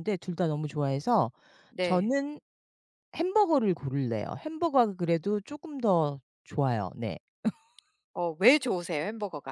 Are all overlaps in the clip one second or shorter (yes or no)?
yes